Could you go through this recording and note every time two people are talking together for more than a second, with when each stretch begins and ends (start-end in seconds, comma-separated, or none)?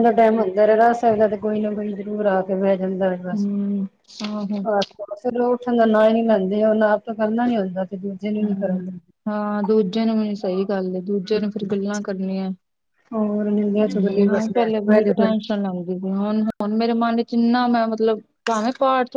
13.1-15.4